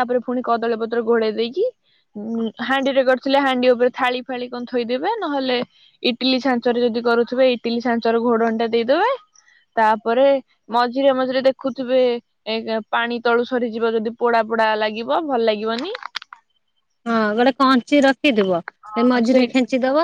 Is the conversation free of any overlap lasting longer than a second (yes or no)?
yes